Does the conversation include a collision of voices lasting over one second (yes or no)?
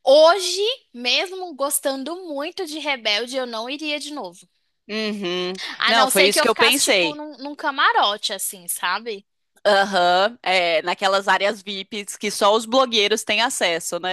yes